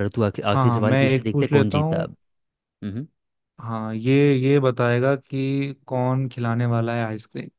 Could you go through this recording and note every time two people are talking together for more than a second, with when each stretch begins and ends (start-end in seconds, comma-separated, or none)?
0.5-2.0